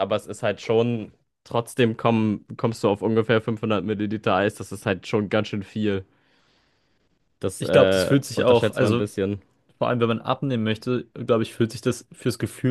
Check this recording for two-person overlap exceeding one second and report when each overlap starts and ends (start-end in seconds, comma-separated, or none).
7.6-9.0